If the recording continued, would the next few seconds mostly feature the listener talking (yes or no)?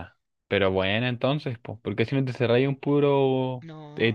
no